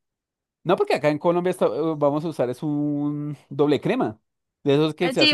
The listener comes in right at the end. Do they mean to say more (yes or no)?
yes